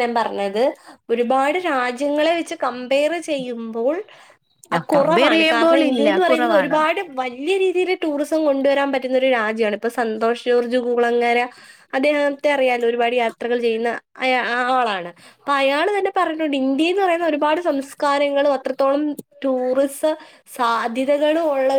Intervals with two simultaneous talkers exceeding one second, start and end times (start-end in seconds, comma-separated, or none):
5.0-6.8